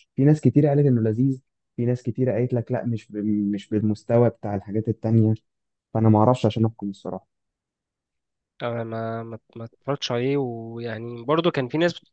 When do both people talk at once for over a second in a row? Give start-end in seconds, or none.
none